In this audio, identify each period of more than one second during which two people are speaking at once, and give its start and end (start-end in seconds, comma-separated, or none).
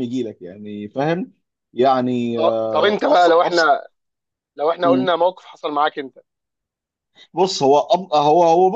2.4-3.7